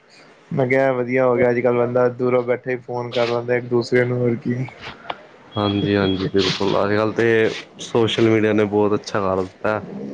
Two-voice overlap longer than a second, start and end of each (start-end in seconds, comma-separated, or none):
none